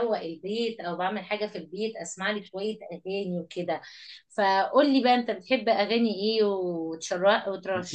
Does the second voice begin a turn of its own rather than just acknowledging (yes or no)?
yes